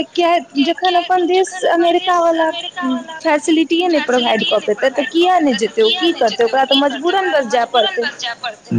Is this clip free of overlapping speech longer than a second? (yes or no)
no